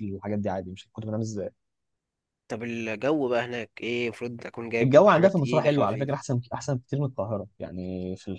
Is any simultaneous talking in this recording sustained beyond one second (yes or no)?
yes